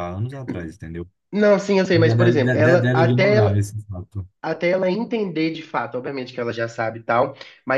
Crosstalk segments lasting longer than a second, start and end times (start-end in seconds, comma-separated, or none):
1.9-3.6